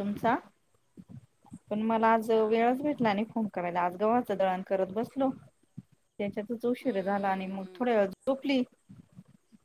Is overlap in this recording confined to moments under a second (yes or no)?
no